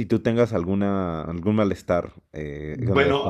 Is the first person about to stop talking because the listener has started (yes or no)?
yes